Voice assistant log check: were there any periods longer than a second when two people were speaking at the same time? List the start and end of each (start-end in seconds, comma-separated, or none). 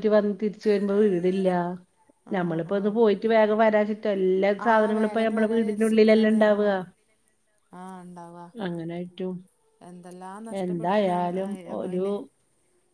4.7-6.7